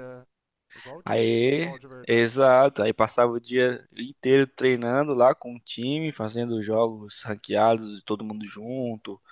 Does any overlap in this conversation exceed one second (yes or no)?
yes